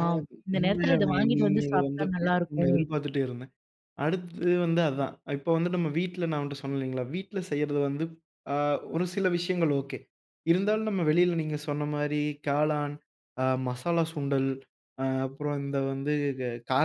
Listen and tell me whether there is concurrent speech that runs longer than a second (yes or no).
yes